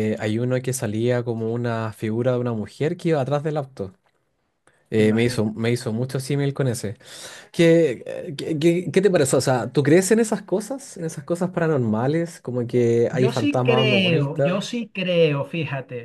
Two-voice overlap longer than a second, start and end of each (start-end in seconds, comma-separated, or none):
13.1-14.6